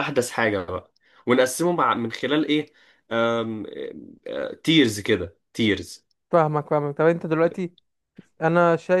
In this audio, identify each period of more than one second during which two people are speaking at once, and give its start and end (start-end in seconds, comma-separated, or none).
none